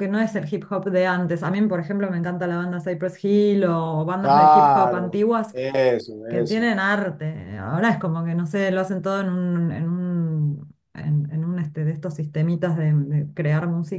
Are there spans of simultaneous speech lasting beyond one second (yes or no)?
yes